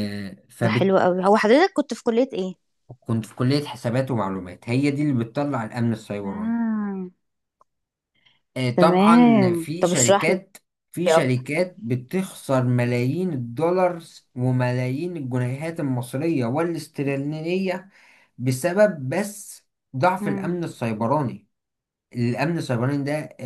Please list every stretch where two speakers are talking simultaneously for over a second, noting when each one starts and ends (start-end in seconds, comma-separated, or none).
8.8-10.4